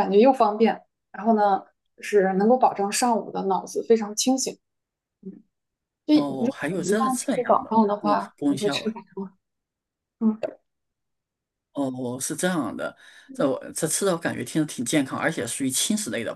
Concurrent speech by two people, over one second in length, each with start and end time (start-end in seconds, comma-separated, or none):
6.1-9.0